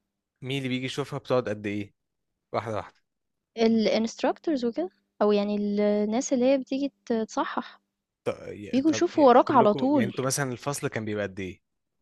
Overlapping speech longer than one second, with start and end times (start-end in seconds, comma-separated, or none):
8.7-10.1